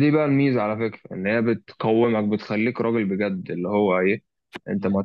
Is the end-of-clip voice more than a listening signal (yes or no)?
no